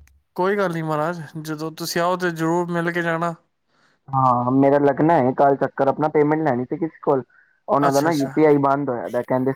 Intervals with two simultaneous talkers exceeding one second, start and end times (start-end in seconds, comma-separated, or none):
none